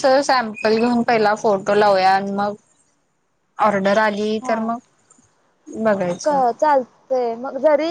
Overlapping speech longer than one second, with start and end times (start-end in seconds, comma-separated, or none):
none